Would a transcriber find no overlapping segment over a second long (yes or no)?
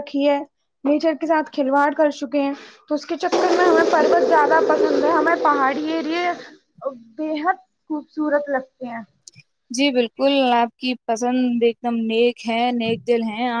yes